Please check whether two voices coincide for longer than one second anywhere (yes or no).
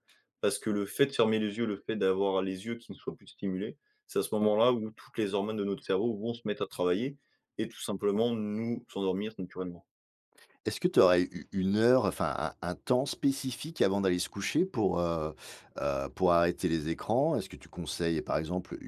no